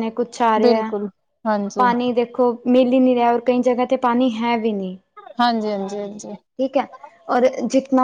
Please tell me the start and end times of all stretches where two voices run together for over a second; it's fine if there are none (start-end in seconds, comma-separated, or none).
none